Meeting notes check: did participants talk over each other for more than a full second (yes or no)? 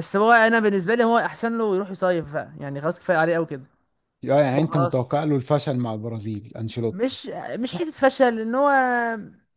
no